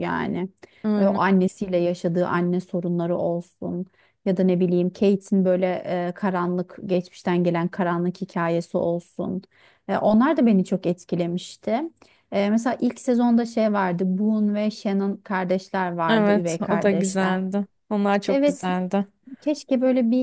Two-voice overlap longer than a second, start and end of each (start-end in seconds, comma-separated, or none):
16.1-17.4